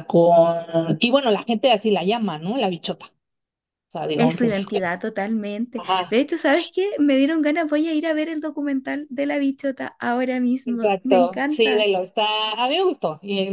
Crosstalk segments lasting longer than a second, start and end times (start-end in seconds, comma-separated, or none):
10.7-11.9